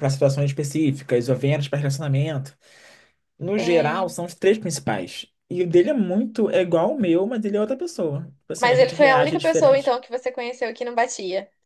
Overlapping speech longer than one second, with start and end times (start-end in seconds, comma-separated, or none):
8.6-9.9